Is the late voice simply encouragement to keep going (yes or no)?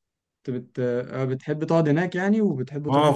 no